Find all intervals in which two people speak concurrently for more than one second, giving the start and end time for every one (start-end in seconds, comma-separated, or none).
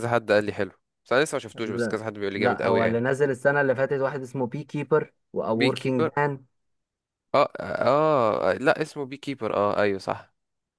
1.6-3.0